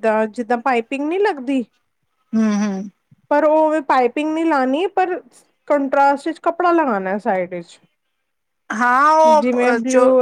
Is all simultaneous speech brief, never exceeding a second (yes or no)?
yes